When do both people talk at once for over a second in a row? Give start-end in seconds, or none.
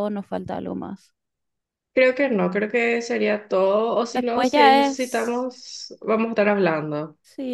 4.1-5.5